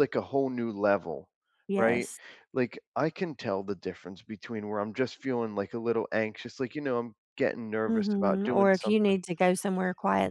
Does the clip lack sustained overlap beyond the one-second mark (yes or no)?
no